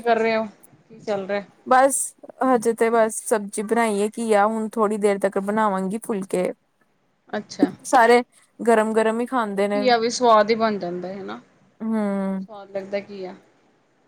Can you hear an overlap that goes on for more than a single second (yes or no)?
no